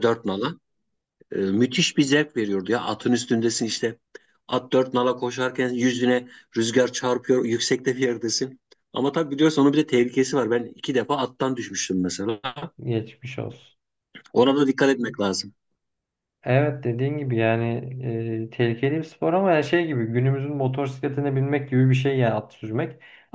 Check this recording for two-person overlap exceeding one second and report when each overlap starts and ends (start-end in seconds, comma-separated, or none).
none